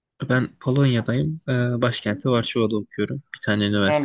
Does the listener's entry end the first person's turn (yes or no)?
yes